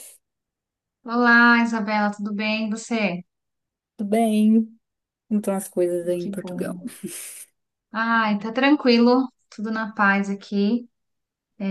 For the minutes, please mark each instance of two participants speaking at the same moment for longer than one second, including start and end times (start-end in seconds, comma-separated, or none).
none